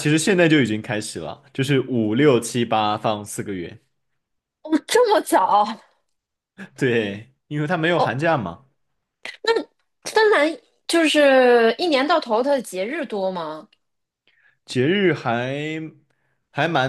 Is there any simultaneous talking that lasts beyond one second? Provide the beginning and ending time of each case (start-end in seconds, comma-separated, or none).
none